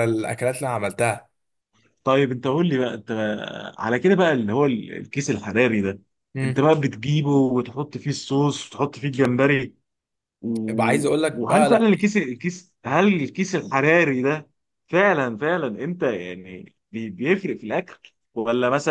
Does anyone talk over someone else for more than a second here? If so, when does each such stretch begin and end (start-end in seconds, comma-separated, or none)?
none